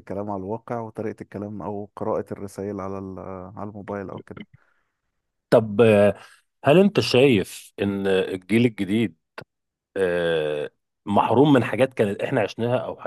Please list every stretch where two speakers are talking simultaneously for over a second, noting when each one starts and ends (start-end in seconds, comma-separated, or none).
none